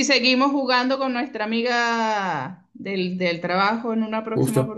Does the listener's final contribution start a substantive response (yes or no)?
yes